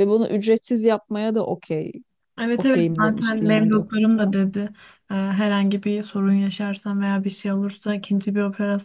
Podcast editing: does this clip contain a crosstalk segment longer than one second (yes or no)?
yes